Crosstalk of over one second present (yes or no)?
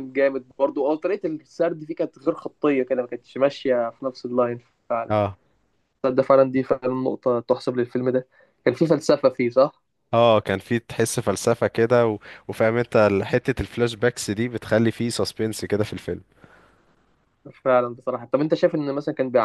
no